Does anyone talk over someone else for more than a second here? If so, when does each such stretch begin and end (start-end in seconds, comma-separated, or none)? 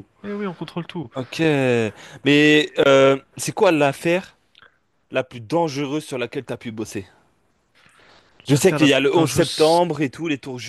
8.5-9.8